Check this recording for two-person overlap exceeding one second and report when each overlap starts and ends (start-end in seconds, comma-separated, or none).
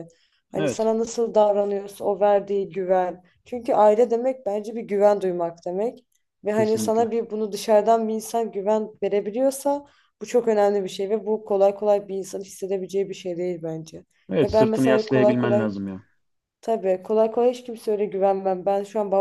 14.4-15.7